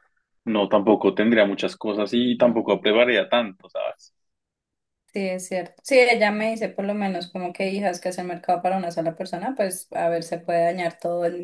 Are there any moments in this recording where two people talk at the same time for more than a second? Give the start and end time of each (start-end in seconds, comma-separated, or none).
none